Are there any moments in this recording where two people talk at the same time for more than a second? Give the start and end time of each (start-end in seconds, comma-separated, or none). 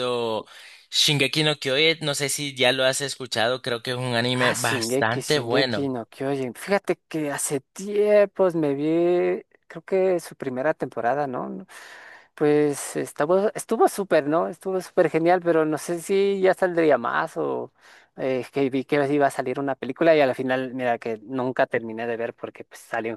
4.3-5.9